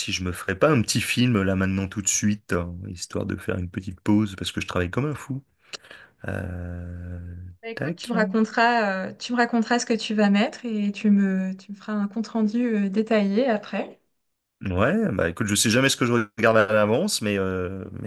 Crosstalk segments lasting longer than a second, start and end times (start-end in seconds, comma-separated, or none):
none